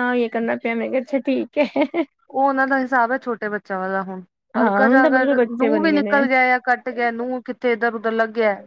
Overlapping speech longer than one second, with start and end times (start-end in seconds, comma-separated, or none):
4.6-6.2